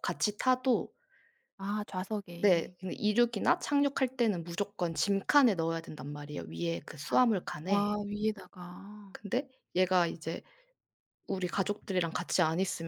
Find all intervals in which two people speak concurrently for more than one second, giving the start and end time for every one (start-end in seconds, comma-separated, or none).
none